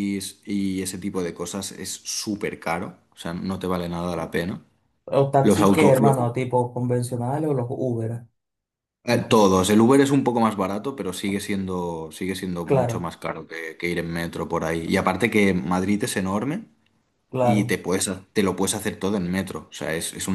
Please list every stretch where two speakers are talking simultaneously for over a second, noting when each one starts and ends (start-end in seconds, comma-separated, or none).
none